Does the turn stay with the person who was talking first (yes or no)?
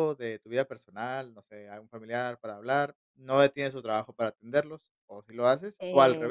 no